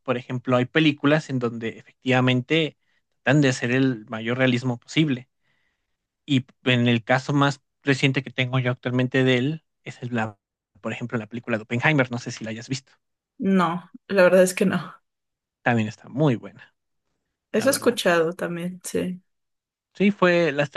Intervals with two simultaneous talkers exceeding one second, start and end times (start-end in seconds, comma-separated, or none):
none